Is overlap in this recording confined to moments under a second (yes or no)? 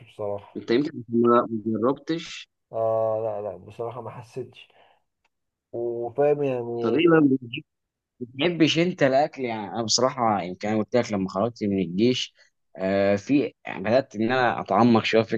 yes